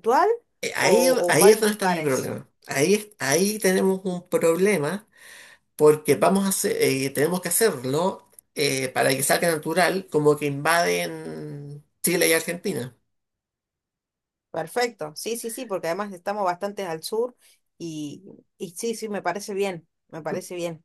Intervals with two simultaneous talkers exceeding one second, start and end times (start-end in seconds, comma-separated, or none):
0.8-2.3